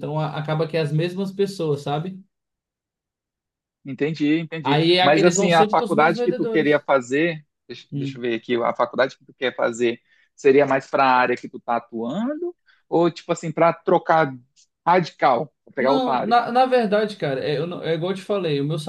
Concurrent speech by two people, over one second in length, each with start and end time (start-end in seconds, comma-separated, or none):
4.6-6.9